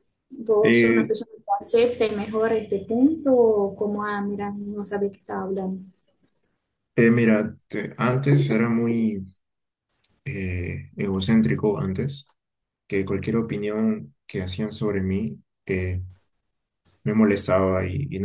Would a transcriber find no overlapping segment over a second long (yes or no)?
yes